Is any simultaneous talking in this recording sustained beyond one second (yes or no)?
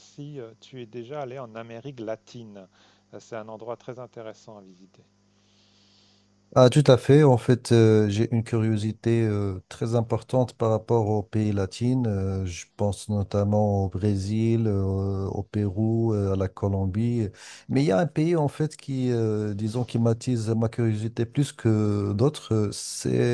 no